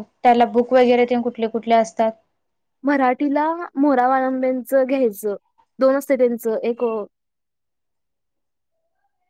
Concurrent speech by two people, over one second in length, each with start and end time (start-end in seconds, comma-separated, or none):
none